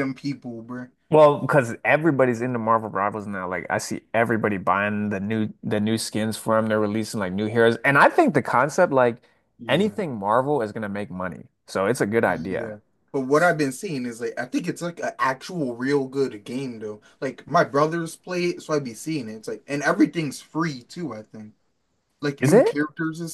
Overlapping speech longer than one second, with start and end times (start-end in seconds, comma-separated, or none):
none